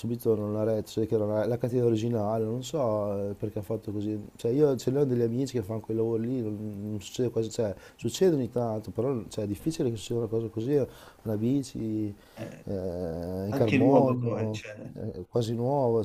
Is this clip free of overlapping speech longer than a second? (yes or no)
no